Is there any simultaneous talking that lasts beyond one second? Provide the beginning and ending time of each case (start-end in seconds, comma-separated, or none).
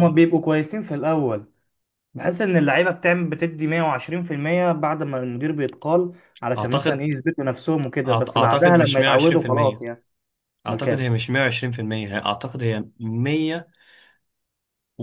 8.1-9.8